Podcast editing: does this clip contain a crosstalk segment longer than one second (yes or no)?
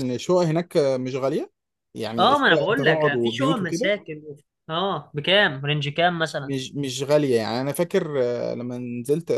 yes